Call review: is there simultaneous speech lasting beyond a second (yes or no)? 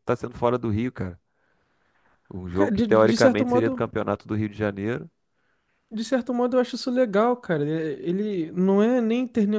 yes